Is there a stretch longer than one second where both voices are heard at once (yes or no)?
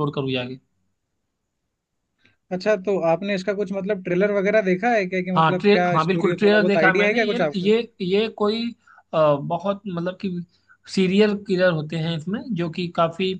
yes